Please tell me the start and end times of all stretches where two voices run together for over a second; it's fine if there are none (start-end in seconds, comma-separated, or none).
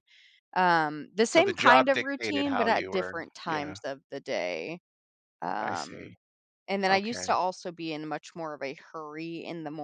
1.2-3.8